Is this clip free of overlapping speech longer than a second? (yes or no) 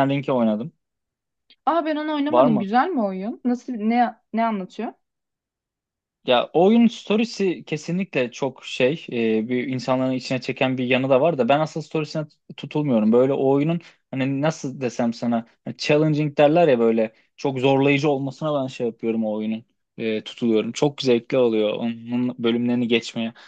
yes